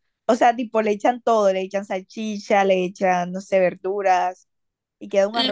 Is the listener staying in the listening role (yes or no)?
no